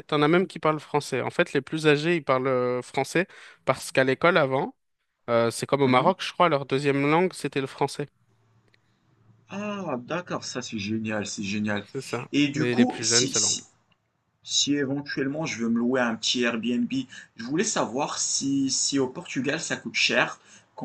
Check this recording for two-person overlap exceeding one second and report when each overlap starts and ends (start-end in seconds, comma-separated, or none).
12.3-13.6